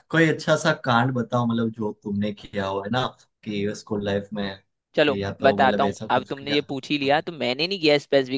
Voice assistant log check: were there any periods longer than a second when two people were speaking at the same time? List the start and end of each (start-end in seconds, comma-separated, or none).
5.1-7.3